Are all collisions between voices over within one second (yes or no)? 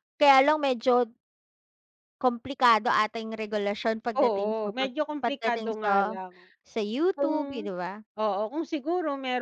no